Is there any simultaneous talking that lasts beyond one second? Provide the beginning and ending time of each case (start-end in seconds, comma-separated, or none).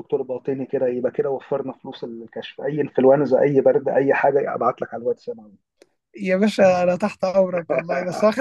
none